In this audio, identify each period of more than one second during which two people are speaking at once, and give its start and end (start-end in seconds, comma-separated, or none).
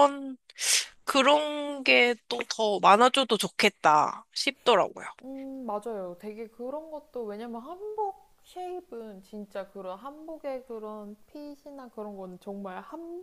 none